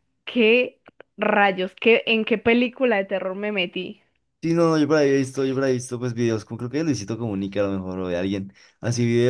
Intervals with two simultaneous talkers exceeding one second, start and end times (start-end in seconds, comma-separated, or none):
none